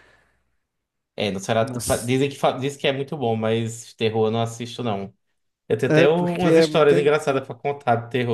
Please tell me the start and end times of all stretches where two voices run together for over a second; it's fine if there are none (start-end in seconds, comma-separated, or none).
5.9-7.5